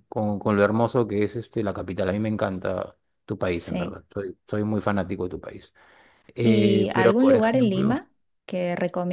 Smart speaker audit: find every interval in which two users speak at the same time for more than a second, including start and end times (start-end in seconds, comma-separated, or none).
6.4-8.0